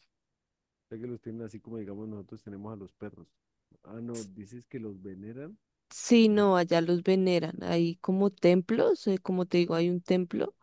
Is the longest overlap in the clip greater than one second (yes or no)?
no